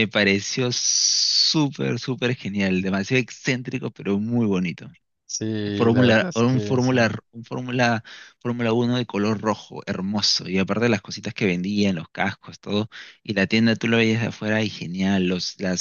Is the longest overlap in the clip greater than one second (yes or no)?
yes